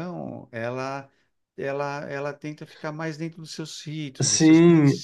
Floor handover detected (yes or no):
yes